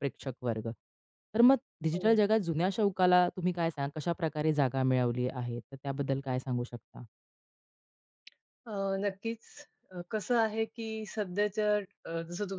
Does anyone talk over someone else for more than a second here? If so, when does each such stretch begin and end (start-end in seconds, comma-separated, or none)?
none